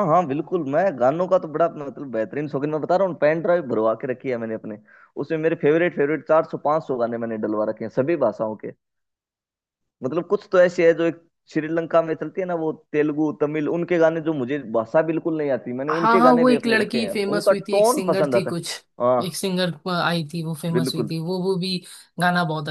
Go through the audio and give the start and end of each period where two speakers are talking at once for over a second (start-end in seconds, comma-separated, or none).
15.9-18.6